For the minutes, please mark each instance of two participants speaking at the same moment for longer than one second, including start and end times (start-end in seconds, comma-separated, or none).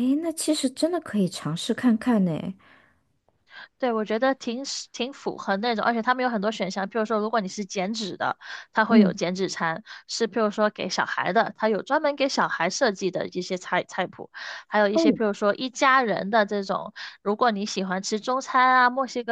none